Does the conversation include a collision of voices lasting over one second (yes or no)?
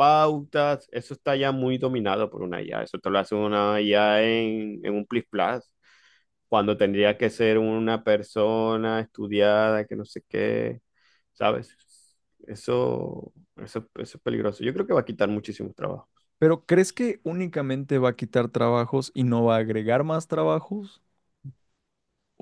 no